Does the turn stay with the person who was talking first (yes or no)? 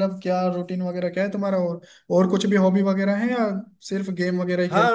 no